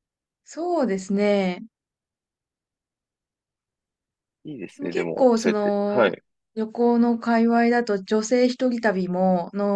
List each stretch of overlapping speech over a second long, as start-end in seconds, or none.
4.8-6.1